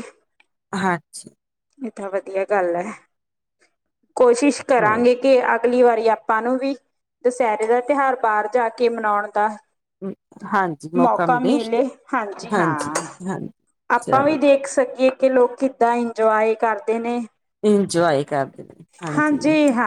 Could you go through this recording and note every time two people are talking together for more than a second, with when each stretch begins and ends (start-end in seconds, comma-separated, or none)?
none